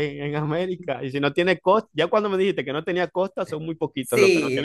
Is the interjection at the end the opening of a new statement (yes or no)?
yes